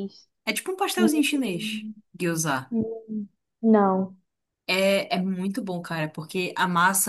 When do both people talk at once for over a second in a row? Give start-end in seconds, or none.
none